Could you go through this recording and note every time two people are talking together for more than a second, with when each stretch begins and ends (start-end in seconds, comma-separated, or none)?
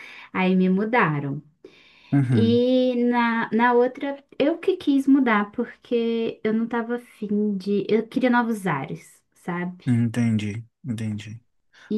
none